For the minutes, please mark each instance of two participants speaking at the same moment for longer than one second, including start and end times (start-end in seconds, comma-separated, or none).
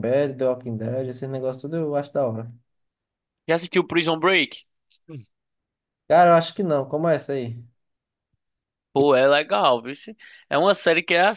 none